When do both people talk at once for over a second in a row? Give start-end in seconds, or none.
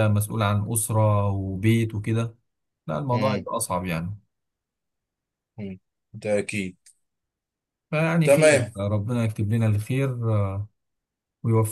none